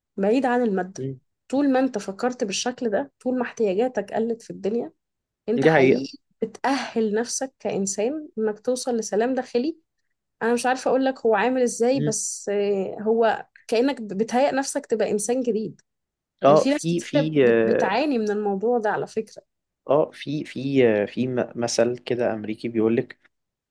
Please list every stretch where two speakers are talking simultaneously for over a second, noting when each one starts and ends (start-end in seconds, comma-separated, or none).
16.5-18.0